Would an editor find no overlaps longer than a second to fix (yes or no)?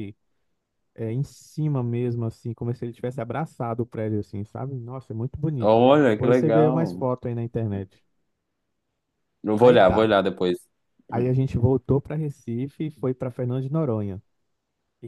no